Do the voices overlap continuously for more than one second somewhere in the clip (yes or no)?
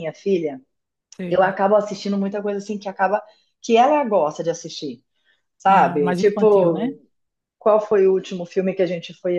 yes